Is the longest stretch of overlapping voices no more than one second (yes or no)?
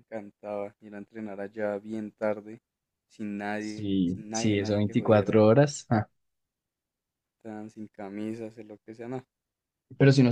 no